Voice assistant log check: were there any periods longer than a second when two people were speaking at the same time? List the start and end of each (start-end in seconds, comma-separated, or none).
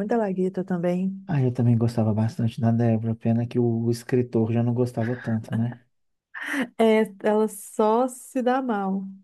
none